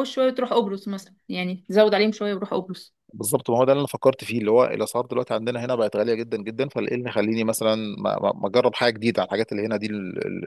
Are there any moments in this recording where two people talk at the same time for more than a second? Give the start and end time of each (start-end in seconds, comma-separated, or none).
none